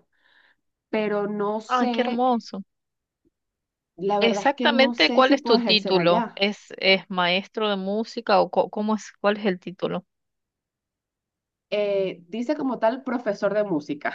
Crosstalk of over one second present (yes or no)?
yes